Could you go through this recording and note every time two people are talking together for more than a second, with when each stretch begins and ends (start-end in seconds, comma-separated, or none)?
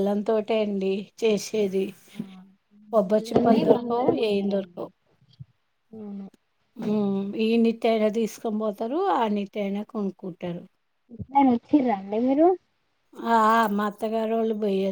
3.1-4.9